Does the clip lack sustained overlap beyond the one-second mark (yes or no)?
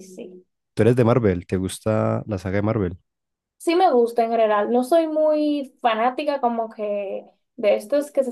yes